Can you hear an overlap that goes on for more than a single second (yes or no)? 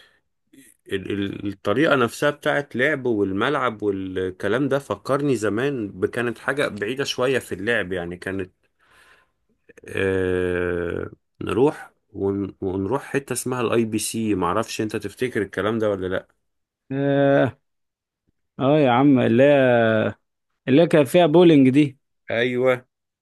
no